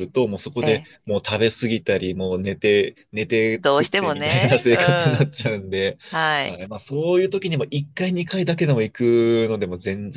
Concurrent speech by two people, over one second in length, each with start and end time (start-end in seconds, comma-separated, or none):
3.6-5.3